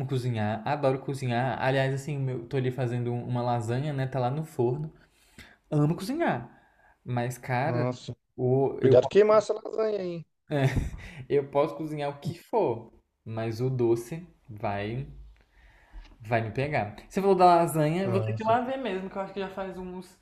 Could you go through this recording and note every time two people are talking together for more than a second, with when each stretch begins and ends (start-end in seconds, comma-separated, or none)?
none